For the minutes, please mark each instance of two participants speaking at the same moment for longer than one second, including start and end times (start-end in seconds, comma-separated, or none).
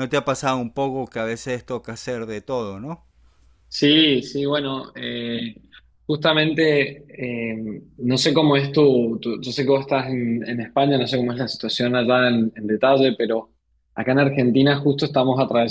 none